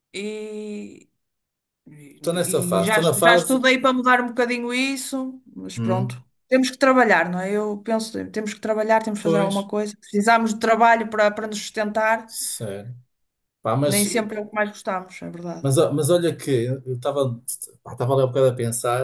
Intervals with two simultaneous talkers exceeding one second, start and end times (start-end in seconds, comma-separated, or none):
2.2-3.6